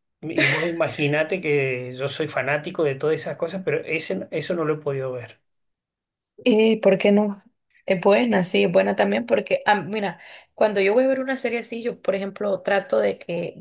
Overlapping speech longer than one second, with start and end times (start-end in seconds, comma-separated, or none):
none